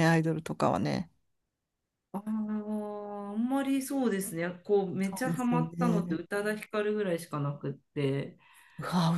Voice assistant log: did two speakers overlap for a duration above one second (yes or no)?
yes